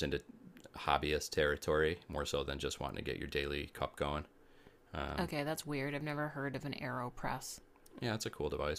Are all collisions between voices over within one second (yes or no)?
yes